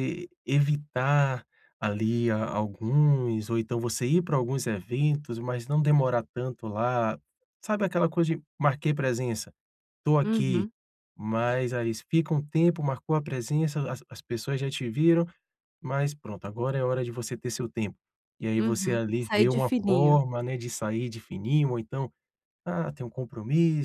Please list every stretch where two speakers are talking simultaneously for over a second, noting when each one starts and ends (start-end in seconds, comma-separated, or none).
18.6-20.2